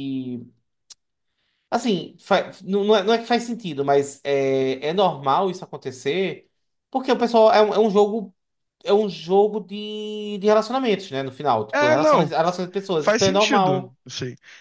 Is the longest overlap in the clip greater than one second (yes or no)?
yes